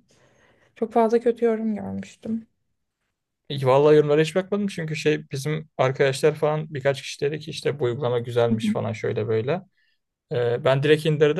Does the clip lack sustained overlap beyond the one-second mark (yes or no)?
yes